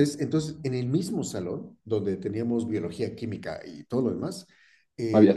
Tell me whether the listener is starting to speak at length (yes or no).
no